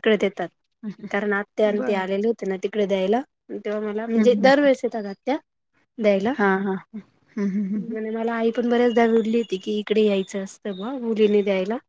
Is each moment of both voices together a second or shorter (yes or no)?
yes